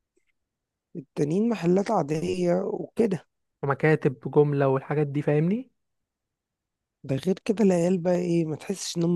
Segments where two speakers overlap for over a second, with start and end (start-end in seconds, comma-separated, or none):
none